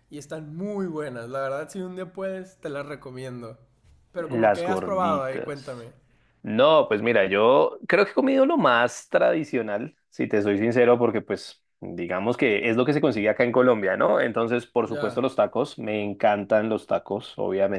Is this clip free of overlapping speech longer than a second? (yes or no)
no